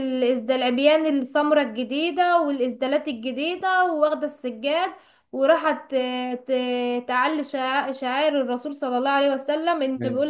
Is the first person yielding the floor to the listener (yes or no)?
no